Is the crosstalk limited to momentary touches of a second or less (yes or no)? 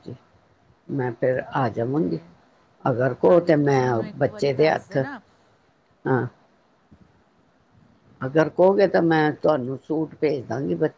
no